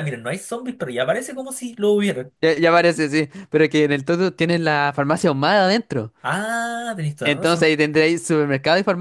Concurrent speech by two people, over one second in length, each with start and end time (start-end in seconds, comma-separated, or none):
none